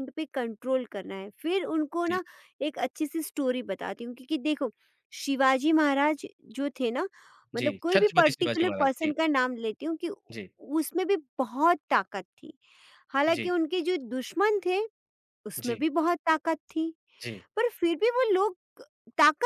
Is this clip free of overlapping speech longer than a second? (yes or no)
no